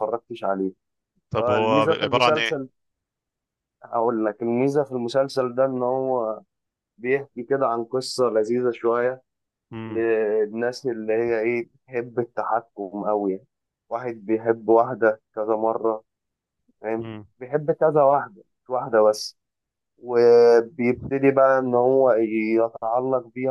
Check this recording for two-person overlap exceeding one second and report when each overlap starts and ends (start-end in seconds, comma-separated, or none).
1.4-2.6